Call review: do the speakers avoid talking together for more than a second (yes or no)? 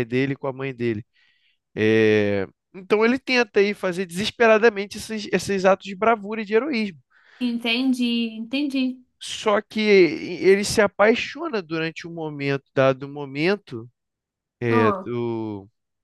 yes